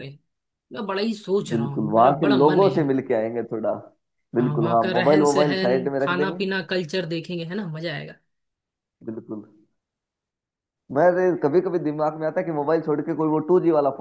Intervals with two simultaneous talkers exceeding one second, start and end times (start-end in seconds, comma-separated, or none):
1.5-2.9, 4.4-6.4